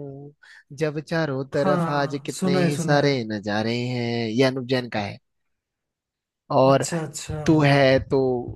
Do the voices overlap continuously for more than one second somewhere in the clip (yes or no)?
yes